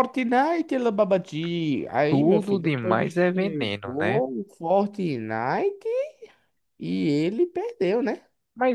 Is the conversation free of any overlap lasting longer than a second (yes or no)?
no